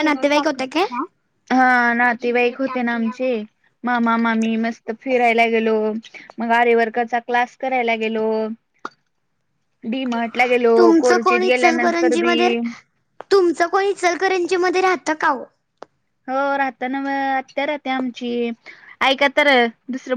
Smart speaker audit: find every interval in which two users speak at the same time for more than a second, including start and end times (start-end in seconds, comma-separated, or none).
10.8-12.3